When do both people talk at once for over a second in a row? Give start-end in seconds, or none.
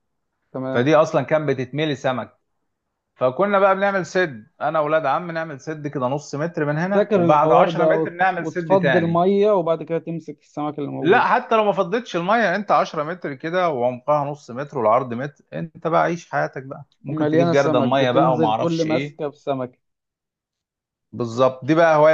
6.7-9.2, 17.1-19.2